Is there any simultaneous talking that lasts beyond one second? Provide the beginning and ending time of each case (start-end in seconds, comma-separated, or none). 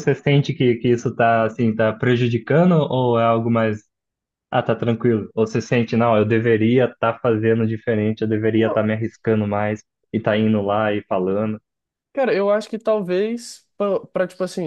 none